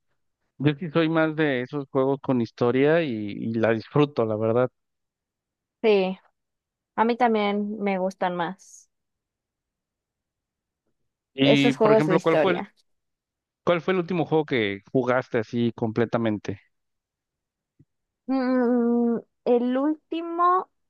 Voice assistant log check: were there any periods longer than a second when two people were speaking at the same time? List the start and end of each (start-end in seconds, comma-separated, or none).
11.4-12.7